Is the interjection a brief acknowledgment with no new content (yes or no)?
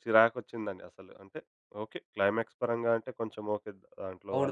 no